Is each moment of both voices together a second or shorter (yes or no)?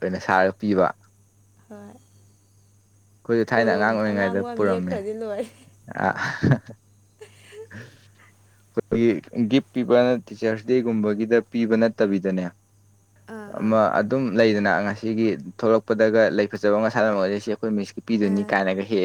no